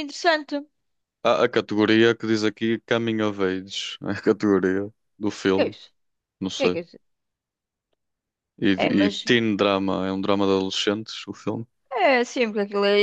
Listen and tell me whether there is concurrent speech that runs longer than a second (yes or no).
no